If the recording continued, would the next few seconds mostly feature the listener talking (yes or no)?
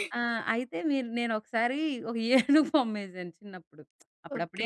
yes